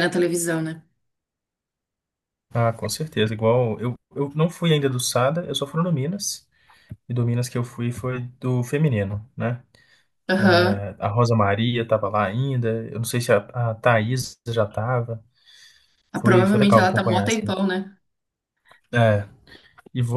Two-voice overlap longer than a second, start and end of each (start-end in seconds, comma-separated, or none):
16.2-17.6